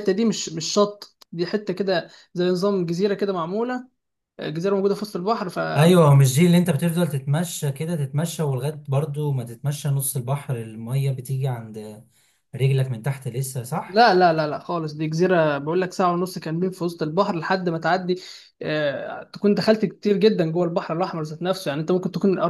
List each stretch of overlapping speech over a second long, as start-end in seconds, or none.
none